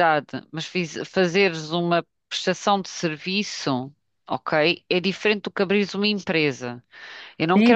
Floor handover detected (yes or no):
yes